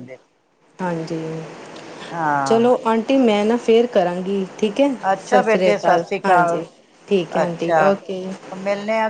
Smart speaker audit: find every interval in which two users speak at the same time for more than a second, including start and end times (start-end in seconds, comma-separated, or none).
5.3-6.6